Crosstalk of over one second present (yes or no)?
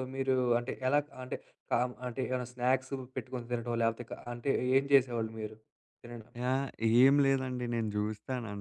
no